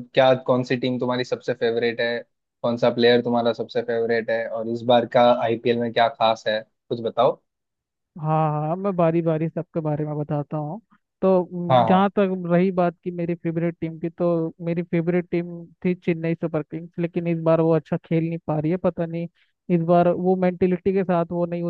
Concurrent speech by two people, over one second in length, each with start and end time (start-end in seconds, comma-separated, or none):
none